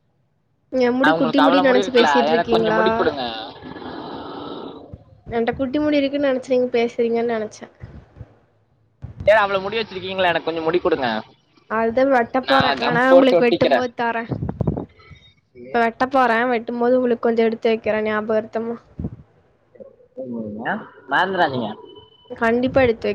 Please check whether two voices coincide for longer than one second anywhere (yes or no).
yes